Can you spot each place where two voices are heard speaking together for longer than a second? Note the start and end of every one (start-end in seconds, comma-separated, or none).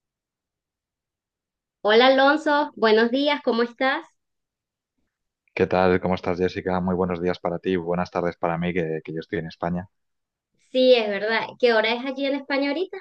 none